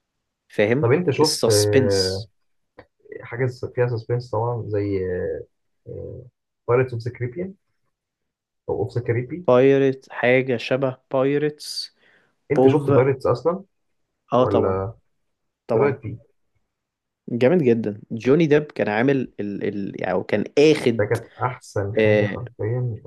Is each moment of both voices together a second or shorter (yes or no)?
no